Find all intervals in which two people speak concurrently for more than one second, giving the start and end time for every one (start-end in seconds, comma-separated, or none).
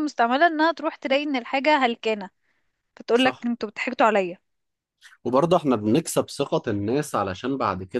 none